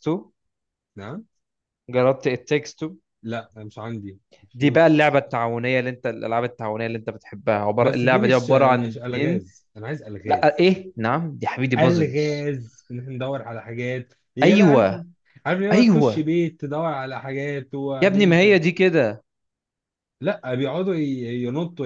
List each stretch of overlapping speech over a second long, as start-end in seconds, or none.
7.8-9.4